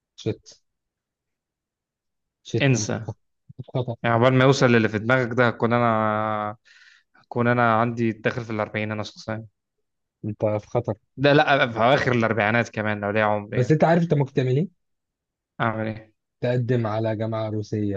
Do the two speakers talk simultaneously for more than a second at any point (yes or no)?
no